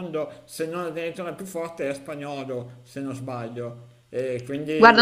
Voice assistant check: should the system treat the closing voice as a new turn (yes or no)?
yes